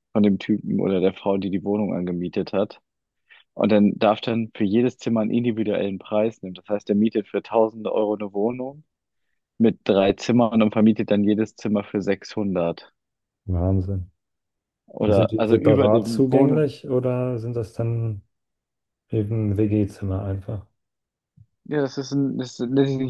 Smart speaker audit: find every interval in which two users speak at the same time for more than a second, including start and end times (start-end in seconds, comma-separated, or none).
15.0-16.7